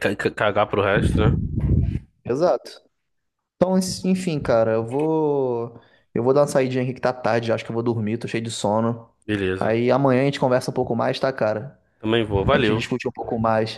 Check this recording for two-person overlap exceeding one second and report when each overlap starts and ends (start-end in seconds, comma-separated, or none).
none